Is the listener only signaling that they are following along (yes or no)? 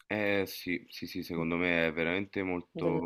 yes